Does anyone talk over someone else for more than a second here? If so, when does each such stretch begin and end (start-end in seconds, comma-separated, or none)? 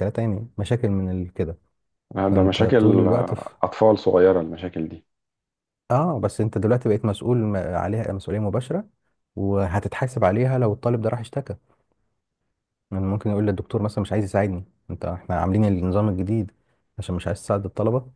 2.2-3.5